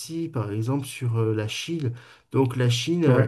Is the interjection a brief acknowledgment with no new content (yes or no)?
yes